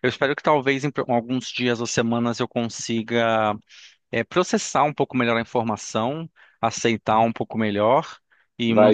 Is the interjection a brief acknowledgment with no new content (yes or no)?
yes